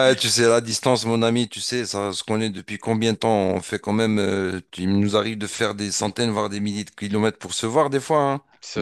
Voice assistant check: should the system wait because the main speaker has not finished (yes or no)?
yes